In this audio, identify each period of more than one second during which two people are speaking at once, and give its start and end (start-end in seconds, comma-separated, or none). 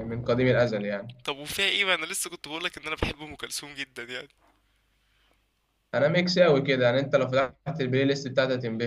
none